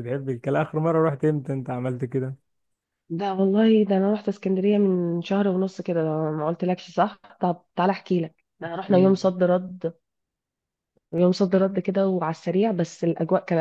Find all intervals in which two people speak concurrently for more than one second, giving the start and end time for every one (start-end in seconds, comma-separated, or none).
none